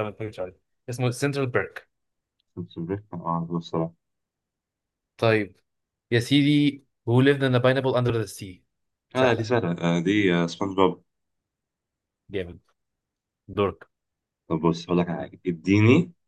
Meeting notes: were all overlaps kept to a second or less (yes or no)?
yes